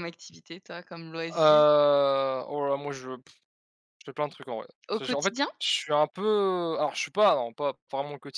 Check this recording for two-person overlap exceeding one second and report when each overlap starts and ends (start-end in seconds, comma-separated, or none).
none